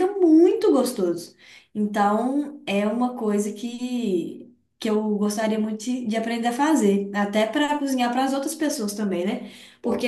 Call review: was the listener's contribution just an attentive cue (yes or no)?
yes